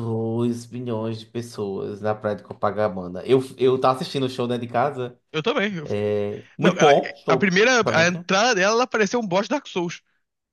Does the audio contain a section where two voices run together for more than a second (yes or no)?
yes